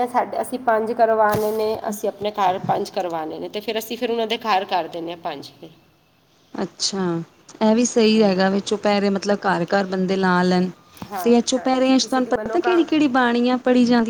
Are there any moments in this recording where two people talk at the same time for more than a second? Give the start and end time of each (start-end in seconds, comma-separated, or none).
11.2-12.8